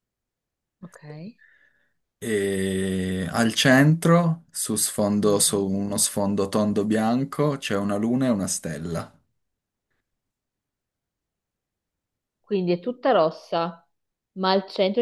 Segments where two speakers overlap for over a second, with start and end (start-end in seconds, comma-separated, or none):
none